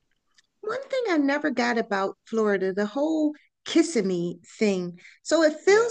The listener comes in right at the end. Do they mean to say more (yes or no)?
no